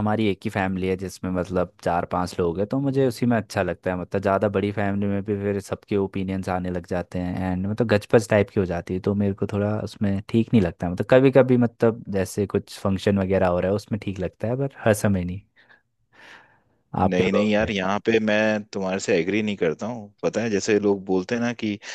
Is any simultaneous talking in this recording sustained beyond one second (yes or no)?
no